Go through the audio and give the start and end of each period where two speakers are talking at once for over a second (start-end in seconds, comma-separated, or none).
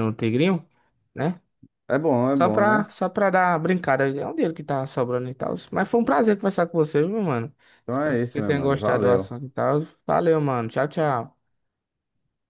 7.9-9.3